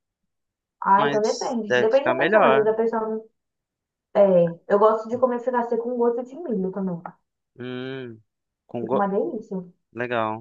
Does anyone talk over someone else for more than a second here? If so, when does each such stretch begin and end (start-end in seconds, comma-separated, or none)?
1.0-2.7